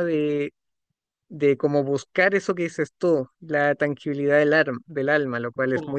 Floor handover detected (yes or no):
yes